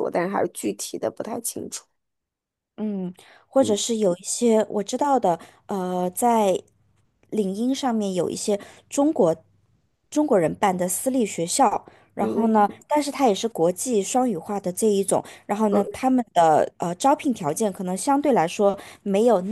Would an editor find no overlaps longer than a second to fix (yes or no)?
yes